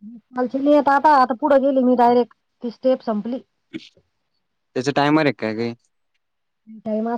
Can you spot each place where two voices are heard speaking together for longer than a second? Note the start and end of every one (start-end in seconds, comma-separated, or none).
none